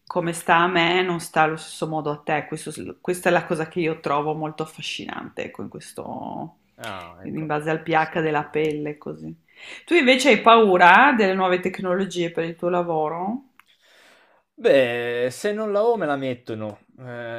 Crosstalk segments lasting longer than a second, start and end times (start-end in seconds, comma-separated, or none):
none